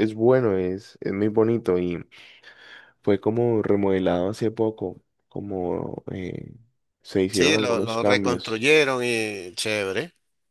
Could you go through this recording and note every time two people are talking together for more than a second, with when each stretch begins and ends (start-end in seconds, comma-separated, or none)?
7.3-8.7